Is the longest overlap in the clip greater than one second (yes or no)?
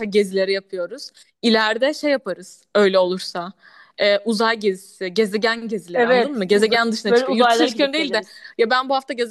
yes